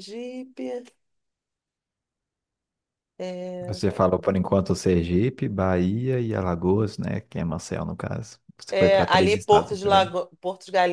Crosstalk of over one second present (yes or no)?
yes